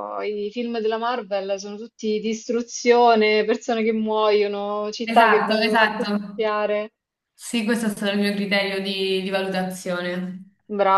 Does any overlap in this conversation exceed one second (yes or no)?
yes